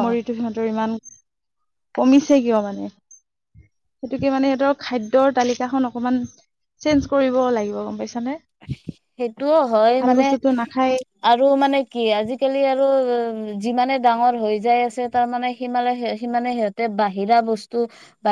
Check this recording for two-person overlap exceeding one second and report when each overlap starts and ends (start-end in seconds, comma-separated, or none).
none